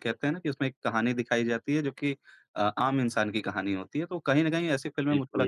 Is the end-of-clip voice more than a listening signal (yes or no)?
no